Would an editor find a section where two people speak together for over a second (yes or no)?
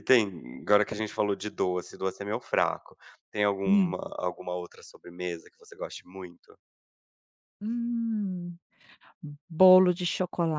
no